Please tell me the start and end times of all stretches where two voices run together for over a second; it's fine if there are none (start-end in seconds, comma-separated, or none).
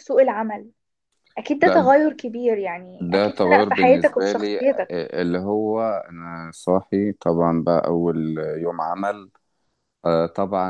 3.0-5.0